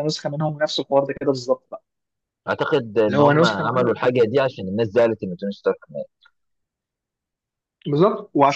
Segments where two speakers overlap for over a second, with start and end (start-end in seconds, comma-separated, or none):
3.0-4.3